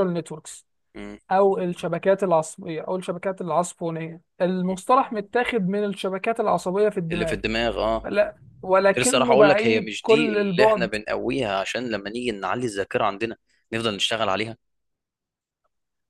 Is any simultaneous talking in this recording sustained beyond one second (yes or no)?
yes